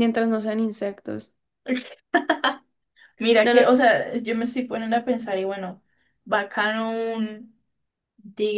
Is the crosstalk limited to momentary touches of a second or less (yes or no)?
yes